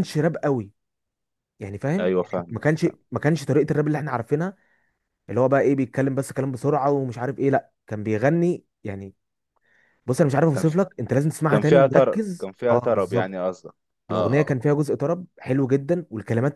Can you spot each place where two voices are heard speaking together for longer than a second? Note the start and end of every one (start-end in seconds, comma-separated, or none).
11.5-13.4